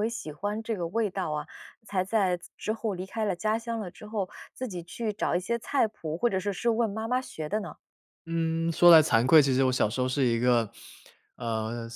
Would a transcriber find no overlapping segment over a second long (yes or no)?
yes